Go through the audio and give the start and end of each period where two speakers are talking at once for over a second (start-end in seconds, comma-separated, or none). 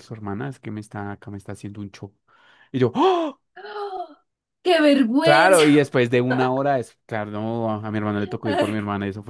none